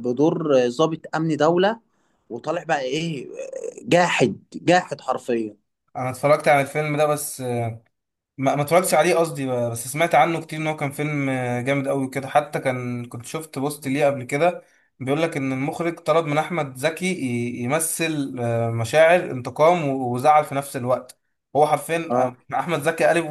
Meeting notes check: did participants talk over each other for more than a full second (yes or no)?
no